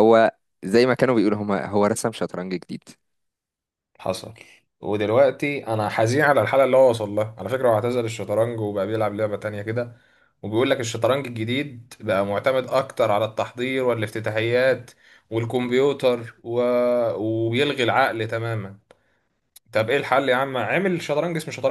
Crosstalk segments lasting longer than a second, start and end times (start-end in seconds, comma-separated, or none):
none